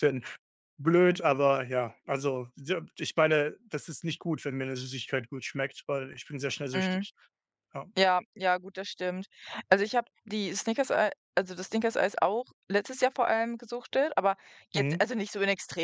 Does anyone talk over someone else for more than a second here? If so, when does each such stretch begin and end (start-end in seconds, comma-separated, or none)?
none